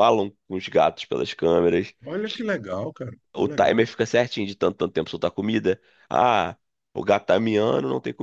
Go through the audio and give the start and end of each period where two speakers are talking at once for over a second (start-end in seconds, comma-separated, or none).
none